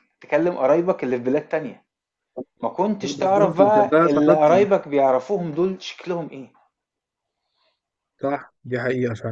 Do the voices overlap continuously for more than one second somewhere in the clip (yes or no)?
yes